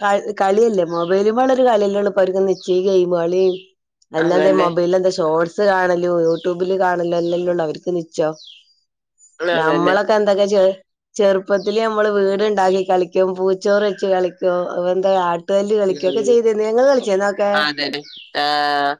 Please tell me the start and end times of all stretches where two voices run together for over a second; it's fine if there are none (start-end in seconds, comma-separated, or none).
none